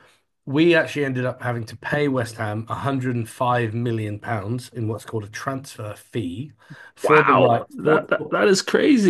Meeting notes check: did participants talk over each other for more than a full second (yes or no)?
yes